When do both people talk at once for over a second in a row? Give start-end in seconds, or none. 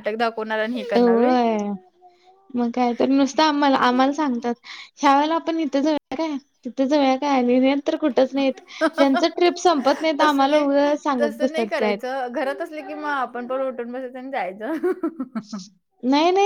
10.2-12.1